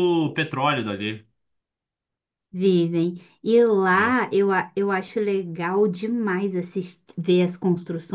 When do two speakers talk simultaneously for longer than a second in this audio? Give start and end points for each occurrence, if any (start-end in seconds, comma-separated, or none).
none